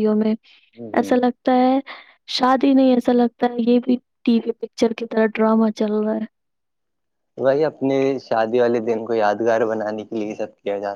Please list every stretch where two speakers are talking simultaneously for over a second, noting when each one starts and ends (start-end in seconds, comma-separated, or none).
none